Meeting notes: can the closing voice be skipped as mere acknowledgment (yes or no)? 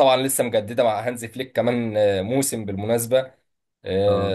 yes